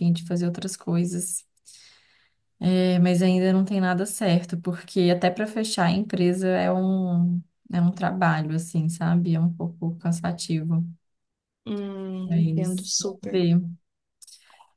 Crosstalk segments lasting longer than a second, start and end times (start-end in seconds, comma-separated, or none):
12.2-13.4